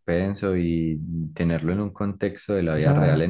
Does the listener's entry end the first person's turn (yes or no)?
no